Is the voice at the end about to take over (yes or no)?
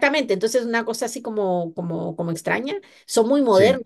no